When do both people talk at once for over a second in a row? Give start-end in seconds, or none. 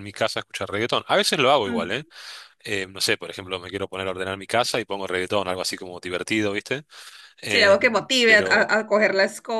7.5-8.8